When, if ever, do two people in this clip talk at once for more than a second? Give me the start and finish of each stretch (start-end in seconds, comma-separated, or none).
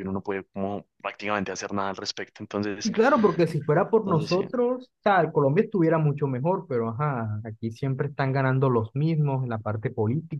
none